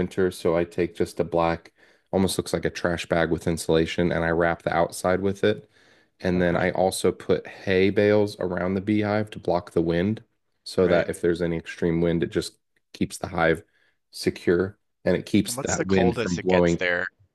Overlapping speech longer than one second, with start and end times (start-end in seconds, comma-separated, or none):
15.5-16.8